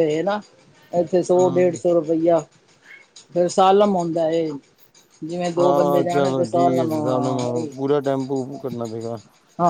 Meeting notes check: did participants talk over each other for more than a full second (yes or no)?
yes